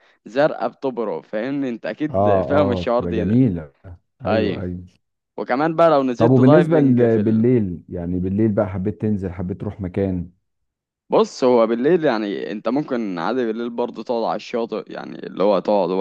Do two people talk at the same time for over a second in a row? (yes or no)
yes